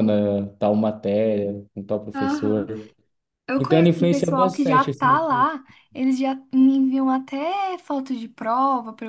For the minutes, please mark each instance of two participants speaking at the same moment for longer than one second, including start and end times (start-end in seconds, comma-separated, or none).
3.6-5.2